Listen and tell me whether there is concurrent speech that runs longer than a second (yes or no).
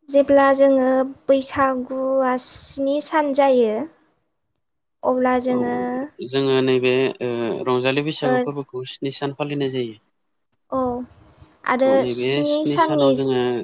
no